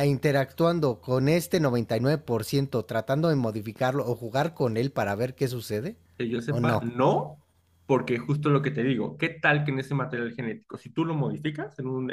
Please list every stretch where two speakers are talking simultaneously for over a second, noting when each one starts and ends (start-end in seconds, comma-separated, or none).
none